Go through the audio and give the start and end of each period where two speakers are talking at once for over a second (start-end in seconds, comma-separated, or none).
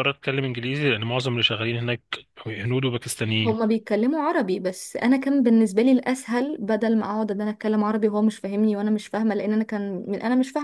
none